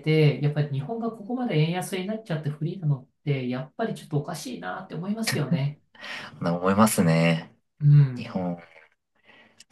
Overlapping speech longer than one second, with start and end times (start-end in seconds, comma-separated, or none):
none